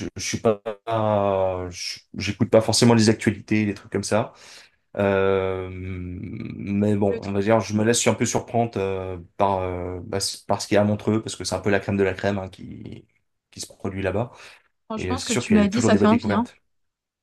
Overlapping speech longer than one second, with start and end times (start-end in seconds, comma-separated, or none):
14.9-16.4